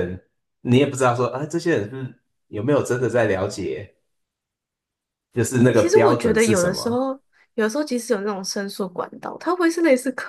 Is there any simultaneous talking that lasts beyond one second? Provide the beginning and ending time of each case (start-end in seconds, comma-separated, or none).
5.7-7.0